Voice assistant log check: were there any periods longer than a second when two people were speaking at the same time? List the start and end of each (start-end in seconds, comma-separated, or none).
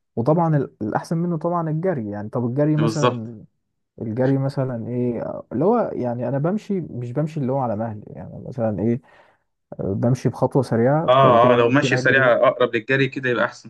11.1-12.3